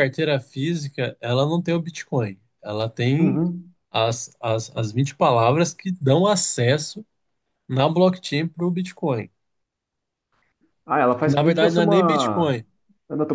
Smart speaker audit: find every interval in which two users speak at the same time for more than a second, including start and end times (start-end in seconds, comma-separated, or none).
11.2-12.5